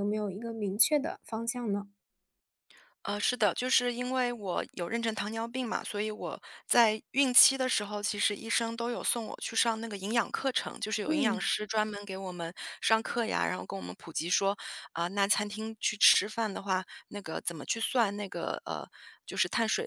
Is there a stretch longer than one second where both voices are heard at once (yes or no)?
no